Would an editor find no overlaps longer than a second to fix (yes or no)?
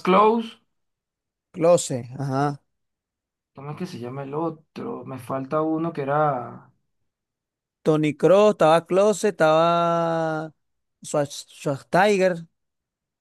yes